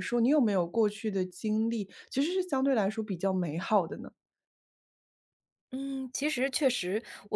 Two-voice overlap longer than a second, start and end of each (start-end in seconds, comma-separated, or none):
none